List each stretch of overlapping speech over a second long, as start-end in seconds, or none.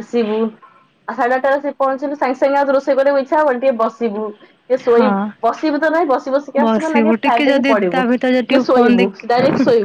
6.6-9.1